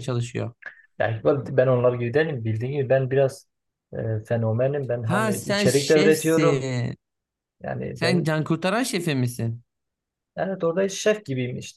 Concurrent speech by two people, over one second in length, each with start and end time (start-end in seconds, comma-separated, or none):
5.0-6.7